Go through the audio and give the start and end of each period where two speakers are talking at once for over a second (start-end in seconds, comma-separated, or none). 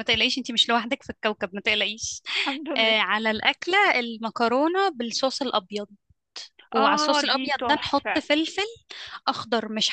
6.8-8.2